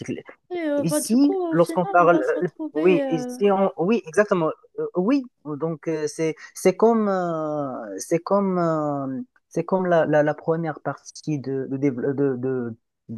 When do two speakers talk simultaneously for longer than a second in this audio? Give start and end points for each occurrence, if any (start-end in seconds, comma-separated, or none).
0.8-3.4